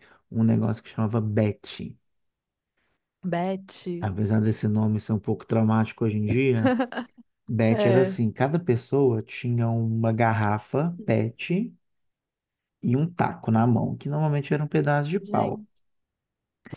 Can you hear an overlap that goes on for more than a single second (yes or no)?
no